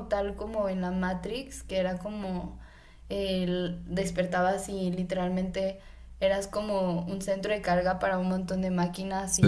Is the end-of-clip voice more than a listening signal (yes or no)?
no